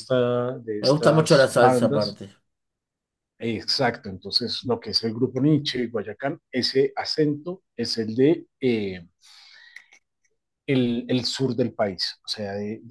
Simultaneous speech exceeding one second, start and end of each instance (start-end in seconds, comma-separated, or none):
0.8-2.2